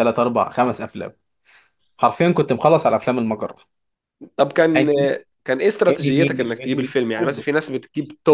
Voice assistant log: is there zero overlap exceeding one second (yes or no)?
no